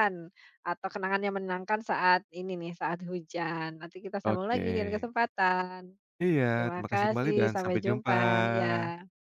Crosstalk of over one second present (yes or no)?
yes